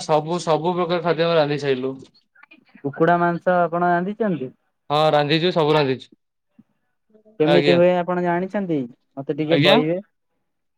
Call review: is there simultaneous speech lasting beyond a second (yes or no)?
no